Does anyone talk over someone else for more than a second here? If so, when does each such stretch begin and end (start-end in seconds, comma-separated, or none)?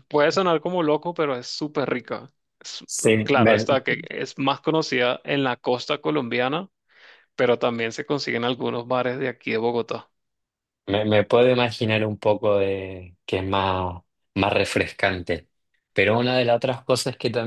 none